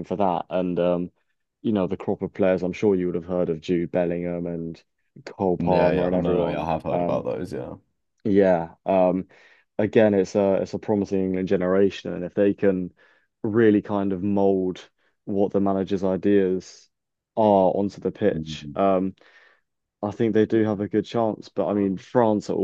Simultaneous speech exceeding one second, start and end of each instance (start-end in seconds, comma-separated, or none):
5.6-7.2